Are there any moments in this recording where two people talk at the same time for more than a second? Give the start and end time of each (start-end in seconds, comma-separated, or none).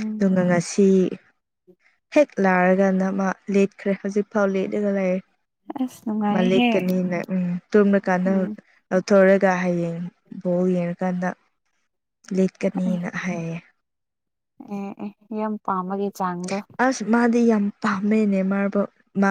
none